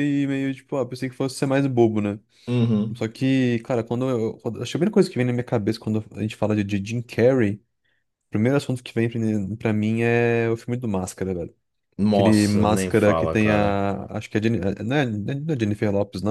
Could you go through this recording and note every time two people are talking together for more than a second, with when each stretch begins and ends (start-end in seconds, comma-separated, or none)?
12.1-13.8